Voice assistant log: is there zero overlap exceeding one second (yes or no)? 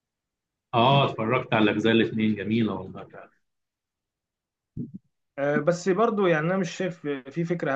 yes